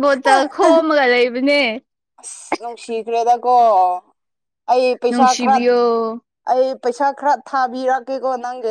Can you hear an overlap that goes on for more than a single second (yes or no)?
no